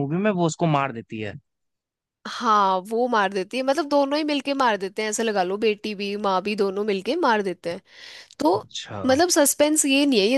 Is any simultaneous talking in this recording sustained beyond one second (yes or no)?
no